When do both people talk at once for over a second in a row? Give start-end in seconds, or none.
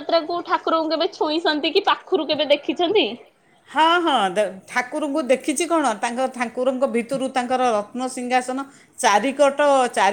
none